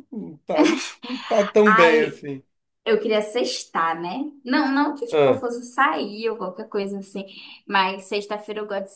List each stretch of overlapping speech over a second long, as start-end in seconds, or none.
none